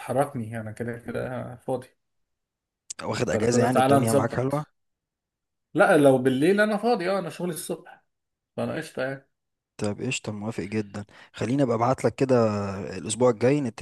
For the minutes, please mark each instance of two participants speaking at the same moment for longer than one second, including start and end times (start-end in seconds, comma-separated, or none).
3.3-4.7